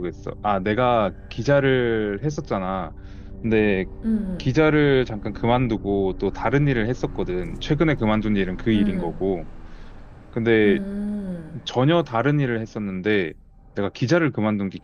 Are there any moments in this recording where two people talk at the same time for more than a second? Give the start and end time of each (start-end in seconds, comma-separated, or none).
none